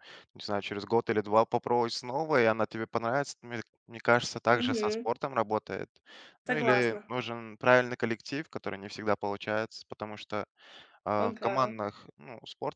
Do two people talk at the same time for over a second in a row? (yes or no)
no